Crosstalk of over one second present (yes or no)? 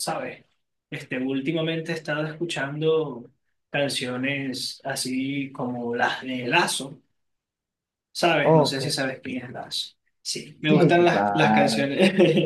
yes